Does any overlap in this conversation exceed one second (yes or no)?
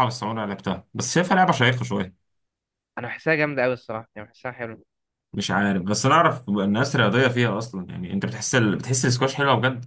no